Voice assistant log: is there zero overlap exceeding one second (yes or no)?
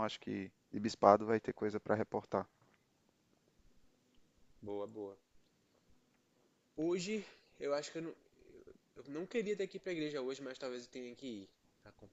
yes